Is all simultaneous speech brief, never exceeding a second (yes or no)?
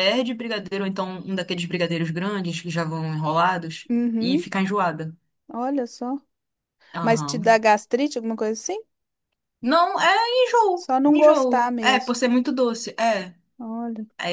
no